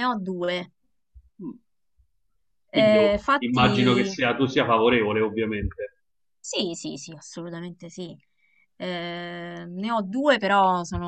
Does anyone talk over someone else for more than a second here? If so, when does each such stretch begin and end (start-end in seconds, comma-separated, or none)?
2.7-4.2